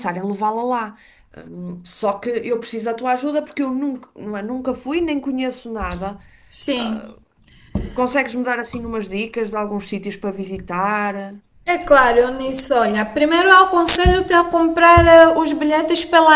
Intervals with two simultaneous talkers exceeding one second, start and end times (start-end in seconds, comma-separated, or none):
none